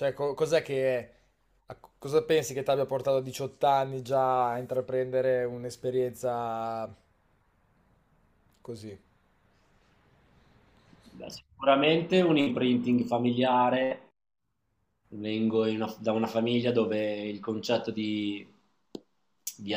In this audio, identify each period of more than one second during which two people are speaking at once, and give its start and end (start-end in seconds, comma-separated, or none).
none